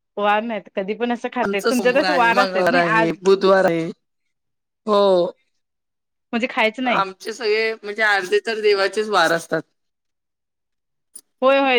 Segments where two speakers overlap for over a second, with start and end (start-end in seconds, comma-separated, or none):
1.4-3.2